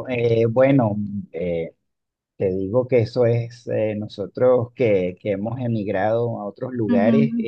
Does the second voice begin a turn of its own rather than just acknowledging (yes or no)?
no